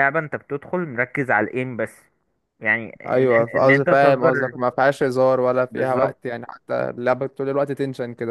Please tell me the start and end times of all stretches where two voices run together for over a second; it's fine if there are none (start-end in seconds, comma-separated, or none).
3.0-4.5